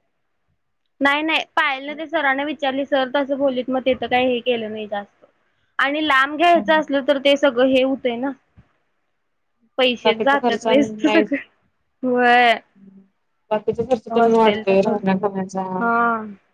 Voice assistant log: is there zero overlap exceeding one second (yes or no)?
no